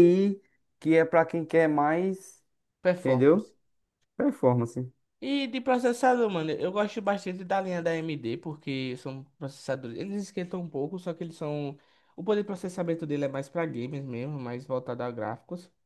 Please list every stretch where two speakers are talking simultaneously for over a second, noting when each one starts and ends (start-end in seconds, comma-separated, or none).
none